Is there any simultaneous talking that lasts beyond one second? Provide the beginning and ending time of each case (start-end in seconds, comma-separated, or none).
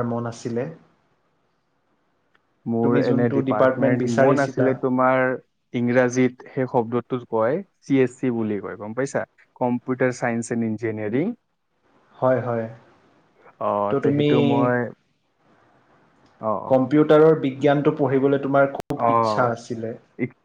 2.9-4.7